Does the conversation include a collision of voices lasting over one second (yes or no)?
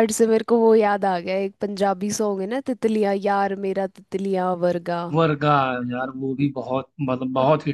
no